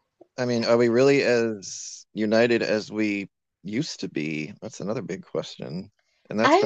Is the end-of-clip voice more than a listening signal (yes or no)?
no